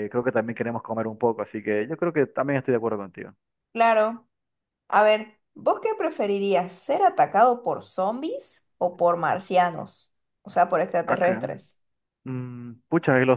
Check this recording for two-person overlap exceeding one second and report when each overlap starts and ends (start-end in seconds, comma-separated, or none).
none